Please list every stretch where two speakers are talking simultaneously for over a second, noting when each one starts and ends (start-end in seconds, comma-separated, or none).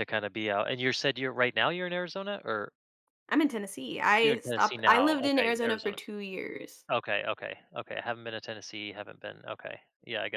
4.2-6.0